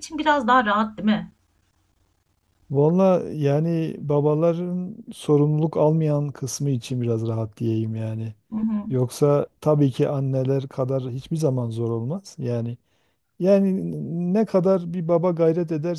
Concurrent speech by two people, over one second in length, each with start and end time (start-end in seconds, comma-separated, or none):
none